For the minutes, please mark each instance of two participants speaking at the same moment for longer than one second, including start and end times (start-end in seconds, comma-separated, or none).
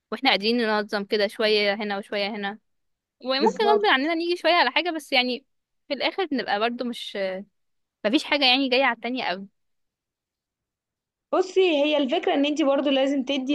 none